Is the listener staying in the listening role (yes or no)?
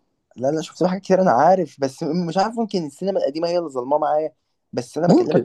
yes